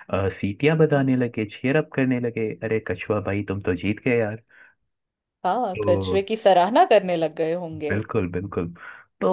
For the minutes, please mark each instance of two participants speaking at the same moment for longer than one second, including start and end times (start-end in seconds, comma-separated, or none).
none